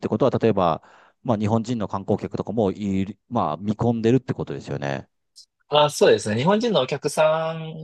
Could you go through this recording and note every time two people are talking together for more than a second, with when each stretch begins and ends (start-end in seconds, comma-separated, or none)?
none